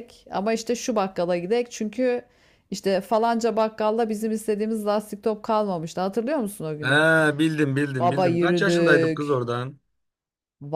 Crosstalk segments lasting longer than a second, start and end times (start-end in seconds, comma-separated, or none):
8.0-9.4